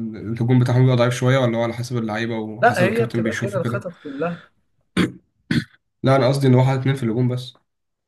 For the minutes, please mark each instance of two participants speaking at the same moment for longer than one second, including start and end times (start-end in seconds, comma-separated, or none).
2.6-3.9